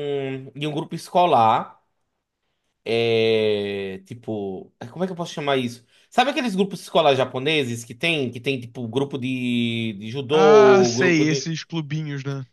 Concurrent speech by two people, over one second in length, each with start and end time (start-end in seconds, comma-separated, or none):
10.3-11.5